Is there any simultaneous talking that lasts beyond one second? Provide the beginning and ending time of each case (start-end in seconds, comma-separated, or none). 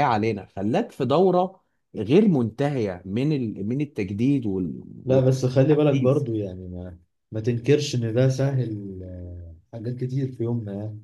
5.0-6.2